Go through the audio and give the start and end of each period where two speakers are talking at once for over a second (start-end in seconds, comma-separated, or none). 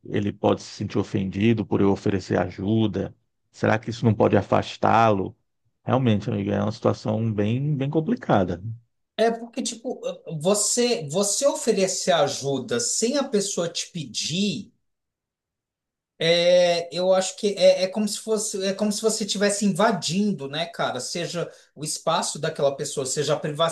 none